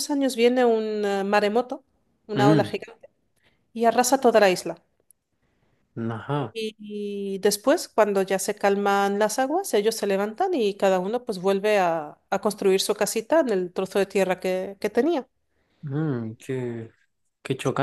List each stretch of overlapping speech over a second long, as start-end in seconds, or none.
none